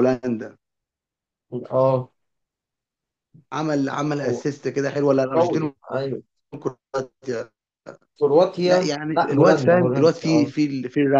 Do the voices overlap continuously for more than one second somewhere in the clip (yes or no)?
yes